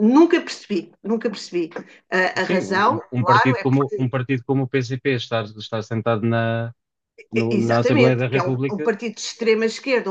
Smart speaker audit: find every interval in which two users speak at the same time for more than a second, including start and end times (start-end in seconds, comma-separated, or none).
2.4-4.2, 7.4-8.9